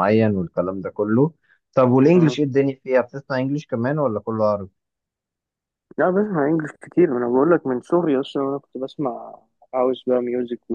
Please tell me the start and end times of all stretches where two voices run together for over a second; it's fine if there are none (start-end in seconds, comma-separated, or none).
none